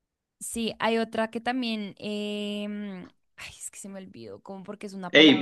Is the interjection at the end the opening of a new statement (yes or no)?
yes